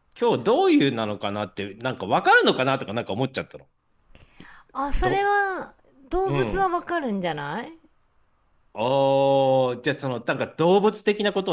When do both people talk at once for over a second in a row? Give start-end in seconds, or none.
none